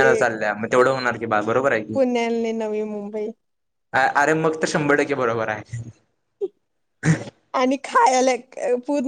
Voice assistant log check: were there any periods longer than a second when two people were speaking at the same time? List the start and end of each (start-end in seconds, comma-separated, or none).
none